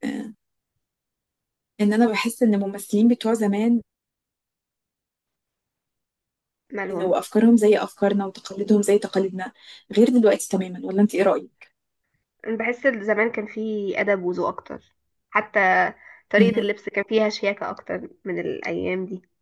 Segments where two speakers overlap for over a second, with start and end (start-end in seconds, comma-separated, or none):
none